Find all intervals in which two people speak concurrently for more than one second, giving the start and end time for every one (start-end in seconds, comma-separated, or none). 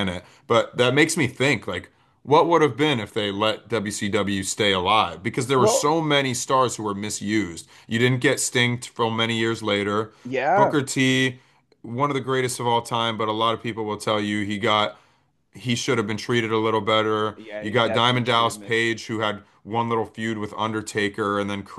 17.4-18.9